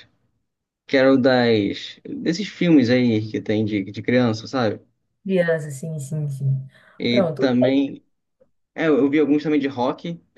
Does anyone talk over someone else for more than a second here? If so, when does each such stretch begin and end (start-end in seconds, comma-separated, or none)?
none